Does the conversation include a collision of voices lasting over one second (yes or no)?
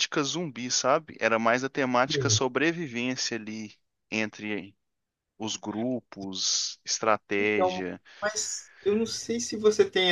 no